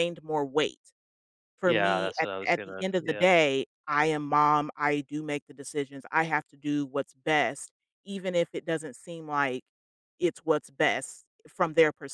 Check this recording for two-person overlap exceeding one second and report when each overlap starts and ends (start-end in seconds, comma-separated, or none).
1.6-3.3